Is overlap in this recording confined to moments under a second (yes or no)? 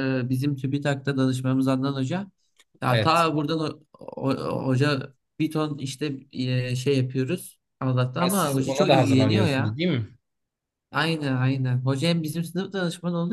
no